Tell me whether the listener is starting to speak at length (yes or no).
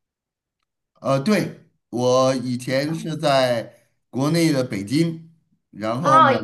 yes